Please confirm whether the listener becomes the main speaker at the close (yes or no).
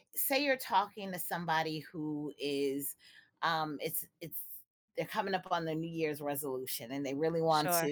no